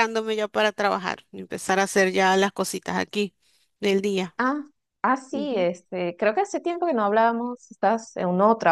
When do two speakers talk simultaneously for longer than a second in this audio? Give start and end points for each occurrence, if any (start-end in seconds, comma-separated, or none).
none